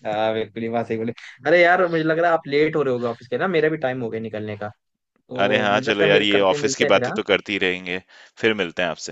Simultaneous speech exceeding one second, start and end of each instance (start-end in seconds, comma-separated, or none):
5.4-7.2